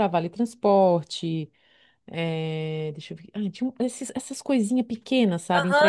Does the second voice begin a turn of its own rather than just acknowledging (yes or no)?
yes